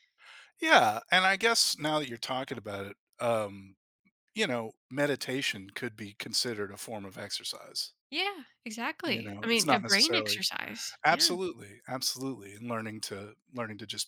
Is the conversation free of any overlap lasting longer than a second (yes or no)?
no